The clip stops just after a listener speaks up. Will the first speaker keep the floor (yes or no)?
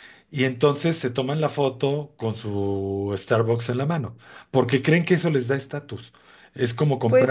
yes